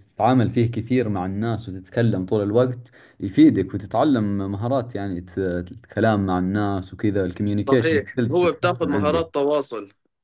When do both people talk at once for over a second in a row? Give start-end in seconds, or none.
7.5-9.2